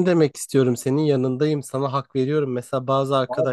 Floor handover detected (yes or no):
no